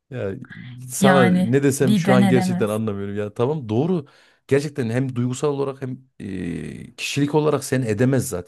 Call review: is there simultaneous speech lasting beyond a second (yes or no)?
yes